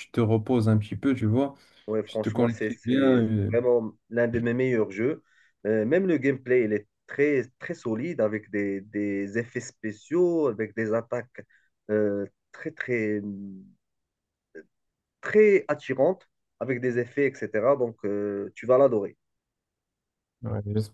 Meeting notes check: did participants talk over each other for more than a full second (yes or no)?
yes